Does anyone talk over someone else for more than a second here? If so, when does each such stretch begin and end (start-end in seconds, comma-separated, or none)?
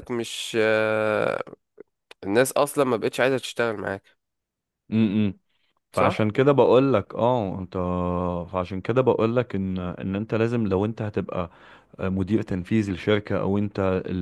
none